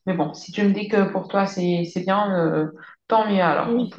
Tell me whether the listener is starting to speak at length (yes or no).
yes